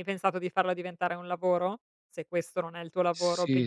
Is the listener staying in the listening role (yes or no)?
no